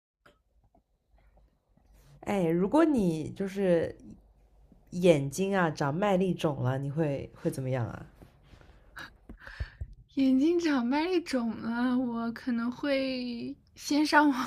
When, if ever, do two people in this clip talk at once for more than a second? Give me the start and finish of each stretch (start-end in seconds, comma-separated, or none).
none